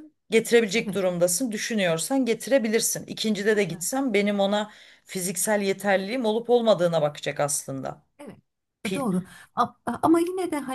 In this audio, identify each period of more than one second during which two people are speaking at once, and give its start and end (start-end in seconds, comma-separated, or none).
none